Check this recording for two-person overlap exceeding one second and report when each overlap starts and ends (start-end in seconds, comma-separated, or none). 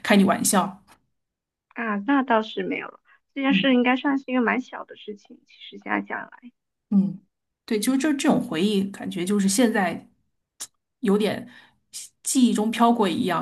none